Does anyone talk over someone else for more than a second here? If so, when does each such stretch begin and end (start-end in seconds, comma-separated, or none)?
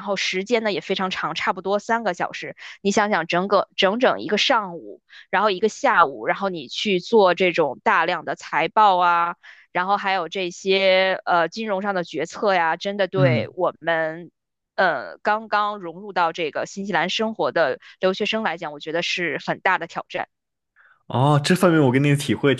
none